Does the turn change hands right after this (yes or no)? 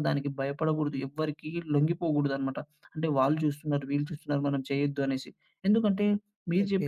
no